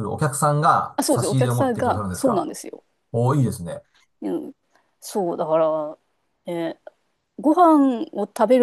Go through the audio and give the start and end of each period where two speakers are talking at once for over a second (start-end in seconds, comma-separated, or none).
1.0-2.5